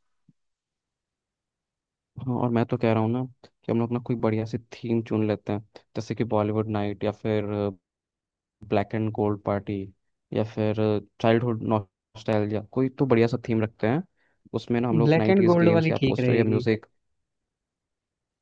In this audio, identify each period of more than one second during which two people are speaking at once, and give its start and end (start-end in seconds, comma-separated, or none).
15.1-16.6